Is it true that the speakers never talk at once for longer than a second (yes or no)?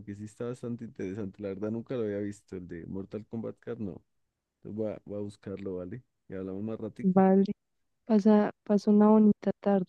yes